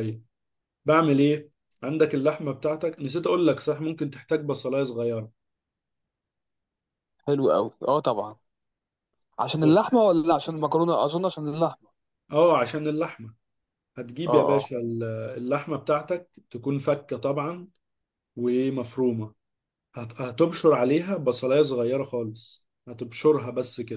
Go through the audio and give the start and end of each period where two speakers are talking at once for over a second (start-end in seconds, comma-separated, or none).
none